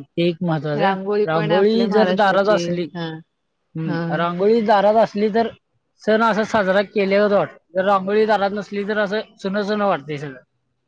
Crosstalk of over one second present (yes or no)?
yes